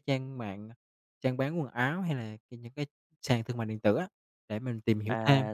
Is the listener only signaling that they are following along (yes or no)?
no